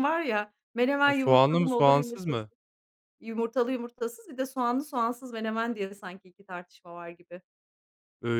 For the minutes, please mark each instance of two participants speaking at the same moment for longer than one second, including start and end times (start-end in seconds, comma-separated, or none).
1.1-2.5